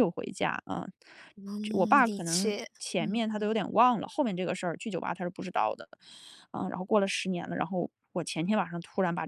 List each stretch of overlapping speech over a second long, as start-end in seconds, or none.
1.6-3.5